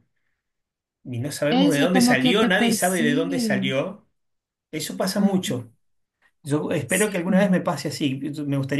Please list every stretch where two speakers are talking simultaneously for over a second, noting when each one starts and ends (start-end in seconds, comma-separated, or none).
1.5-3.7